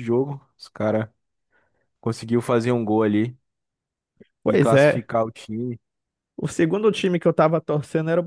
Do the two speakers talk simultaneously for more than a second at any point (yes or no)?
no